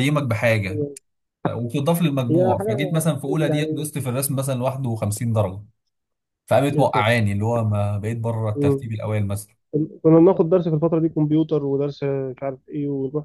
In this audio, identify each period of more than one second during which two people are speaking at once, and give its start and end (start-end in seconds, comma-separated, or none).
2.3-3.9